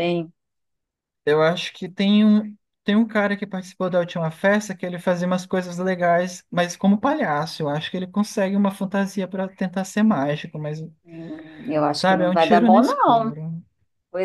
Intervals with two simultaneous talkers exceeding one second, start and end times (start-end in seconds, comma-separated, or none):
11.9-13.4